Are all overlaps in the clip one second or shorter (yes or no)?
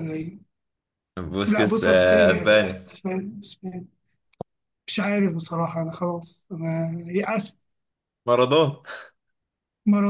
no